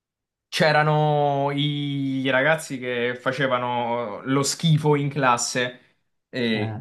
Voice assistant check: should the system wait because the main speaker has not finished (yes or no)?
yes